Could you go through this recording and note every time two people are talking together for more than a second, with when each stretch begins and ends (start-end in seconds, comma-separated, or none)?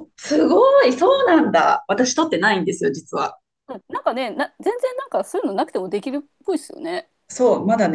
none